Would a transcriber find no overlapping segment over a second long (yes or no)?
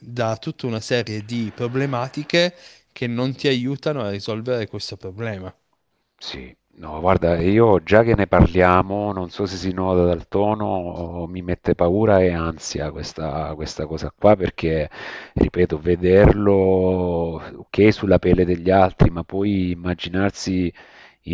yes